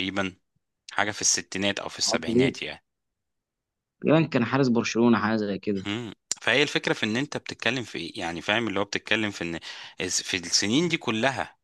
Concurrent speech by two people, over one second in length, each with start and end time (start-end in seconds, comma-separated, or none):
none